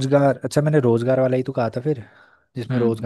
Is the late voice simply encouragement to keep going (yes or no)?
no